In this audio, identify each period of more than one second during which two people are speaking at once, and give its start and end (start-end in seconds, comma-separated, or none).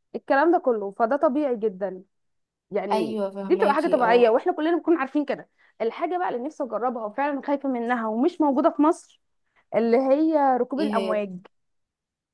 2.9-4.3